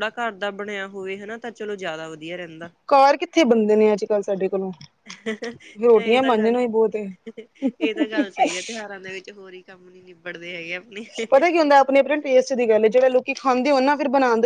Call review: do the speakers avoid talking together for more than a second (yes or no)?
yes